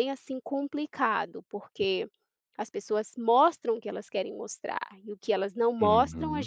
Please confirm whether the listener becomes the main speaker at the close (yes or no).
no